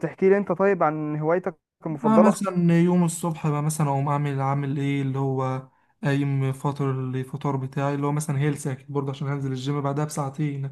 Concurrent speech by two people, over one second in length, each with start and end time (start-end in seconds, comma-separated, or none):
none